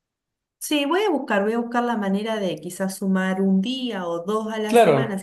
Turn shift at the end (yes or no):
no